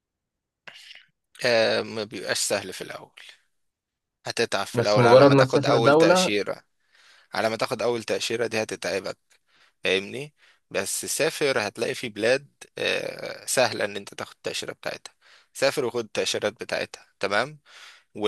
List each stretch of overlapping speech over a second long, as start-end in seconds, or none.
4.8-6.3